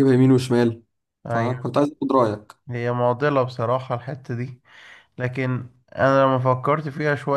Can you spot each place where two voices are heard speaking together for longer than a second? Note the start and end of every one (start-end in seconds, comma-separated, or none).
none